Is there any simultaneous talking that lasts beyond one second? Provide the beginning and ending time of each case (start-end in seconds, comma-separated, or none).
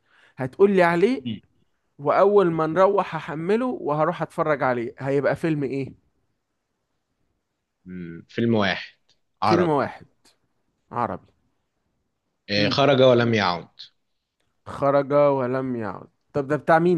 none